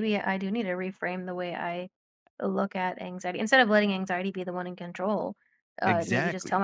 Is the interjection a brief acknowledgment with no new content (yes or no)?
yes